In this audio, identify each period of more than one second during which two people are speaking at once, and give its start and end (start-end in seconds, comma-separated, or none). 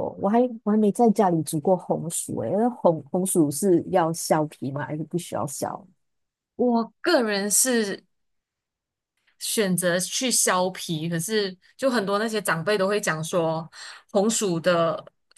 none